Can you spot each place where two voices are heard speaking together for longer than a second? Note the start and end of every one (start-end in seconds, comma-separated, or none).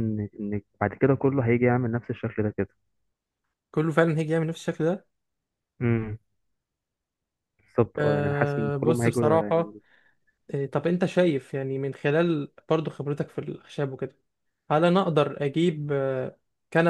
8.0-9.8